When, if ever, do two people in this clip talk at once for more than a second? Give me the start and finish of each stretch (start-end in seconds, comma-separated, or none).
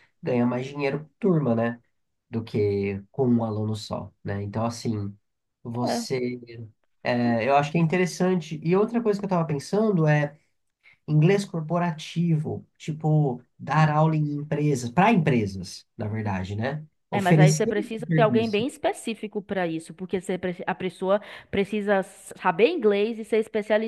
17.1-18.6